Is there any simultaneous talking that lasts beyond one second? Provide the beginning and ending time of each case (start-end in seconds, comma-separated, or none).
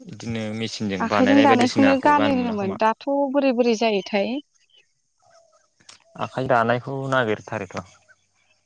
1.0-2.8